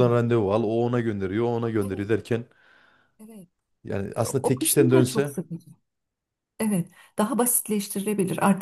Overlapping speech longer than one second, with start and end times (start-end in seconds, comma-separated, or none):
4.1-5.3